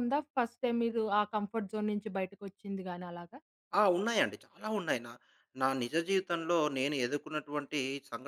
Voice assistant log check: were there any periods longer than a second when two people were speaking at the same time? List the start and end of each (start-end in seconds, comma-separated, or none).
none